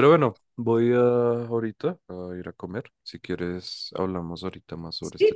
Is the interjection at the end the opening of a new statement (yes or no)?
yes